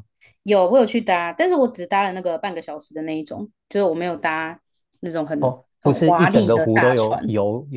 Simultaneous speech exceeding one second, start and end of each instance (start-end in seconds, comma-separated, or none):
5.8-7.2